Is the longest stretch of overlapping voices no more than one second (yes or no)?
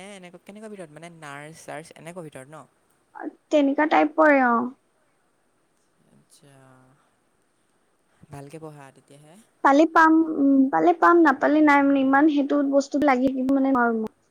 yes